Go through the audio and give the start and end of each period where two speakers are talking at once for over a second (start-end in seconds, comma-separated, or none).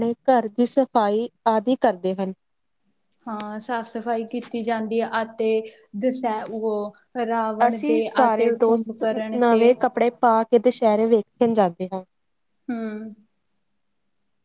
7.7-9.7